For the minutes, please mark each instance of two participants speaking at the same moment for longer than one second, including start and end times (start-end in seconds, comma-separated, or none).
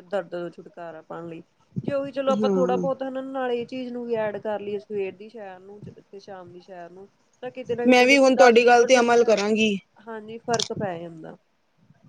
7.9-9.2